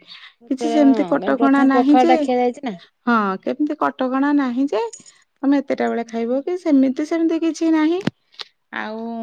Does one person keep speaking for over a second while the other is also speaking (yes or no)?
yes